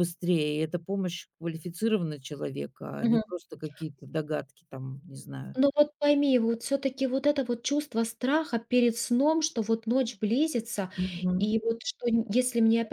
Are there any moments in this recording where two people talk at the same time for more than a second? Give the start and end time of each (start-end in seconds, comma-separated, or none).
none